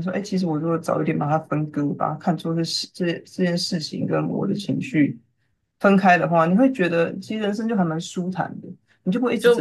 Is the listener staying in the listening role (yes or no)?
no